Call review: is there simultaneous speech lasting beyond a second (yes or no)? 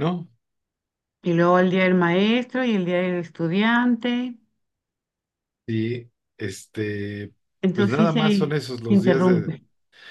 yes